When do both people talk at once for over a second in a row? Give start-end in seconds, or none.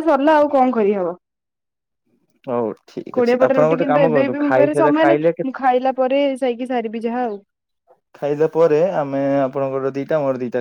3.2-5.3